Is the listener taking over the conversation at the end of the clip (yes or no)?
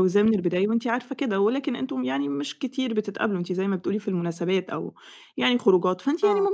no